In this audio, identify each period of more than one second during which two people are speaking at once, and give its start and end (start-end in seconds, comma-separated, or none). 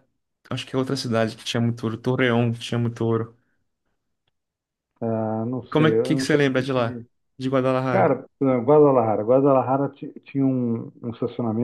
5.6-7.1